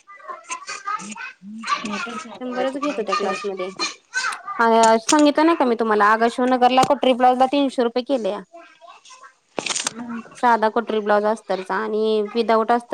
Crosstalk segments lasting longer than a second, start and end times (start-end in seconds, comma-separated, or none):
2.4-3.6